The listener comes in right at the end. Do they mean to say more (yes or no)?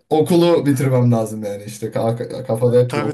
yes